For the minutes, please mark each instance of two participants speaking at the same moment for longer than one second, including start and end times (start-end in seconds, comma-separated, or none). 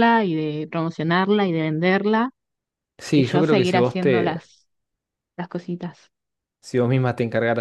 3.1-4.5